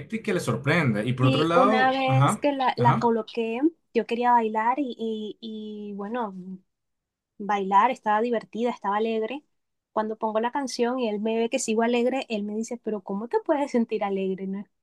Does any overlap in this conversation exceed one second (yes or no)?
yes